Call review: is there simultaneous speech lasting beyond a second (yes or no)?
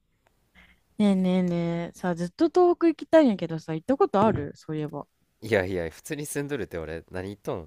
no